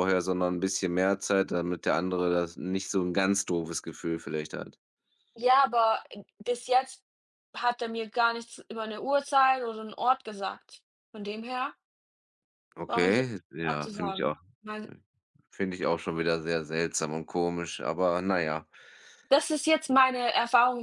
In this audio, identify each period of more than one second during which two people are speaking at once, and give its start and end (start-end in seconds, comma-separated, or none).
12.9-14.4